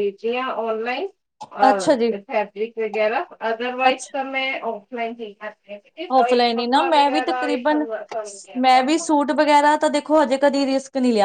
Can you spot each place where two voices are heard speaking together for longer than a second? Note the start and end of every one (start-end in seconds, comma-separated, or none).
none